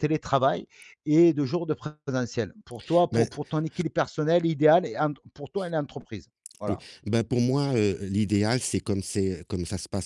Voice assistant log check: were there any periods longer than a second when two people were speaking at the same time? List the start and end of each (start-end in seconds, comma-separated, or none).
none